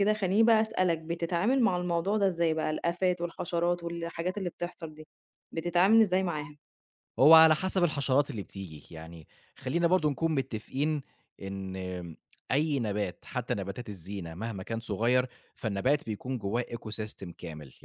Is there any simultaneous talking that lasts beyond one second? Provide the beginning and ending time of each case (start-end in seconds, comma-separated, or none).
none